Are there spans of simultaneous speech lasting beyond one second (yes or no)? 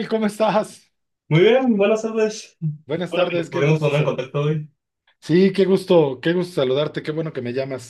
yes